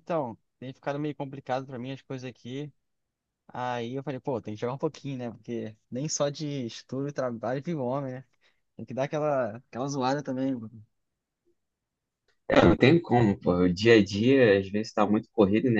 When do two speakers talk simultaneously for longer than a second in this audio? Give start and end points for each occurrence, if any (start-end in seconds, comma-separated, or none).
none